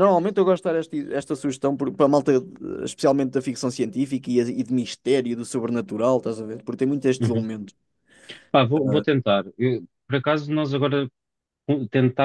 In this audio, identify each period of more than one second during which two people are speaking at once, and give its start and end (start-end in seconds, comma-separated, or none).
none